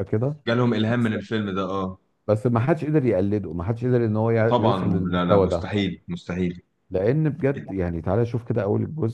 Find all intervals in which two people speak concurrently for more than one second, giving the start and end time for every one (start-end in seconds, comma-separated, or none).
4.5-5.7